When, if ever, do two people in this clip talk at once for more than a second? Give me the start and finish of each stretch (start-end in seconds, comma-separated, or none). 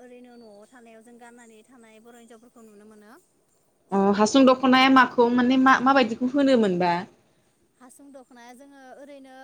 none